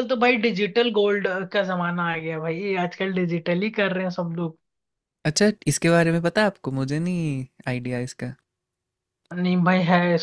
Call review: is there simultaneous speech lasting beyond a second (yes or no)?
no